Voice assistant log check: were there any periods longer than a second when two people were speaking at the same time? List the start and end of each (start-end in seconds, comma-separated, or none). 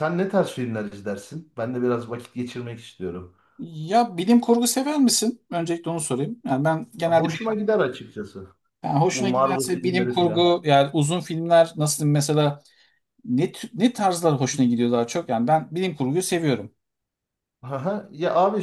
9.0-10.6